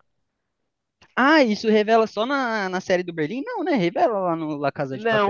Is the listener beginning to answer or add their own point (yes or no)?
yes